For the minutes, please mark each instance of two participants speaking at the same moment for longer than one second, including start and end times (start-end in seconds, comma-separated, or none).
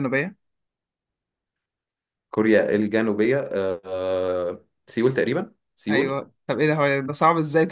none